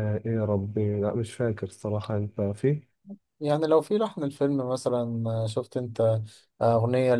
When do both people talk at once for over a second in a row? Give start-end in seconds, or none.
none